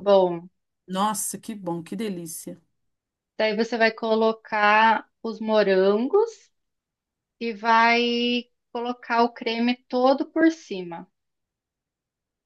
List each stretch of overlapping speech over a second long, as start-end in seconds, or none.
none